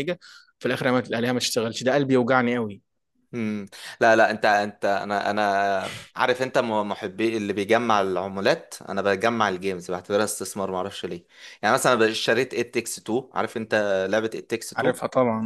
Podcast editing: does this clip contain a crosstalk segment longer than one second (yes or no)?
no